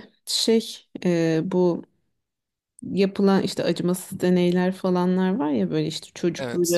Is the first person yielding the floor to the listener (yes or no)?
no